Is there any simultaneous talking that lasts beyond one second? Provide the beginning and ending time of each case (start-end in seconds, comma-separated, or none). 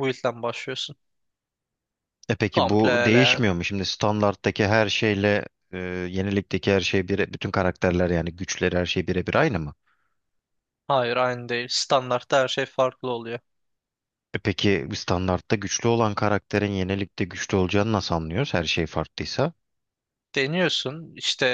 none